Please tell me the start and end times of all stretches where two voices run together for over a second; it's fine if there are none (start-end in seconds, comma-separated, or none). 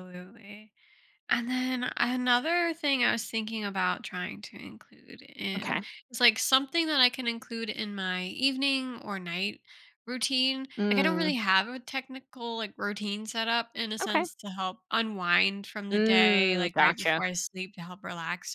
15.9-17.2